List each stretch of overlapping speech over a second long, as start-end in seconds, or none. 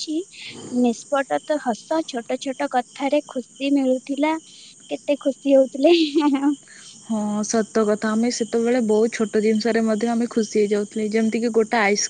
none